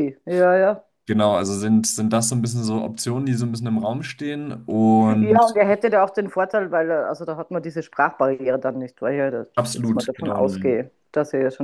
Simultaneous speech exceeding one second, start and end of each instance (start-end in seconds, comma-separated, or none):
9.6-10.8